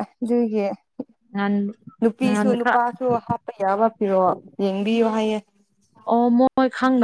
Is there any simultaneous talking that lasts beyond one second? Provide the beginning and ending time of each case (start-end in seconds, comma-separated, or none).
none